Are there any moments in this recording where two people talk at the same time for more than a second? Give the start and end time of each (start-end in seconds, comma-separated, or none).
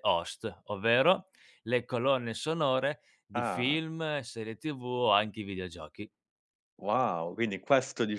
none